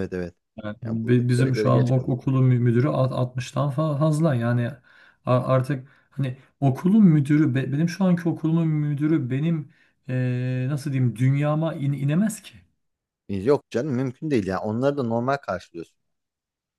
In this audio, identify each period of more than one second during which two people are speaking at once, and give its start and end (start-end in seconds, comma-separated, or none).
0.8-2.2